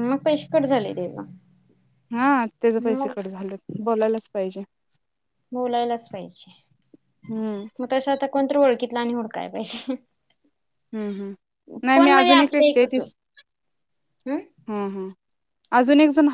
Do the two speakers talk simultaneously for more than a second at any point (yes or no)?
yes